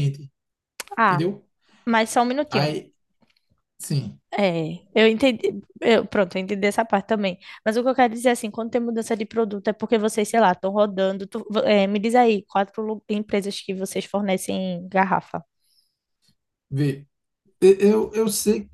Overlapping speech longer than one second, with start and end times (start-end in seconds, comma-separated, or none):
none